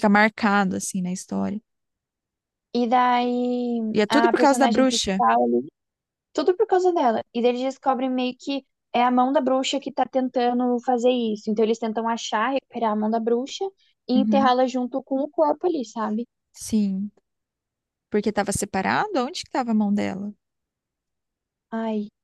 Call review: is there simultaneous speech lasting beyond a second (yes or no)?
yes